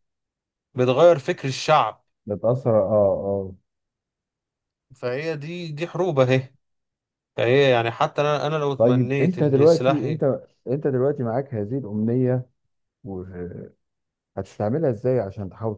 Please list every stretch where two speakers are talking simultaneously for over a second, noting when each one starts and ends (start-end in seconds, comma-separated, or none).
8.8-10.2